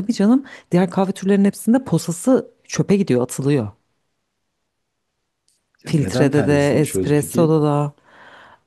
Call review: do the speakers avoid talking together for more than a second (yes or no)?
no